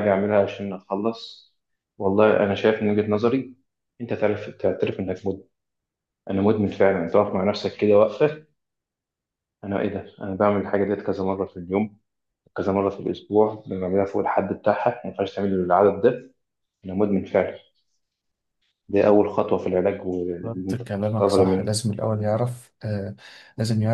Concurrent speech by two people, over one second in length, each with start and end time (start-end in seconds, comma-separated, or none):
20.4-21.7